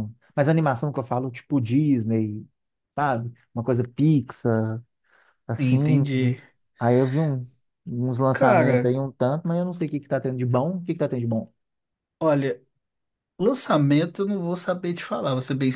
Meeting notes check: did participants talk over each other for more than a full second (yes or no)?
no